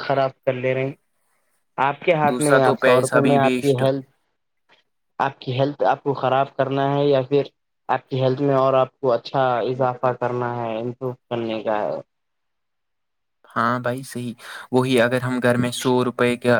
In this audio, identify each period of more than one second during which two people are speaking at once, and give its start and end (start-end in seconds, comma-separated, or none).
2.3-3.8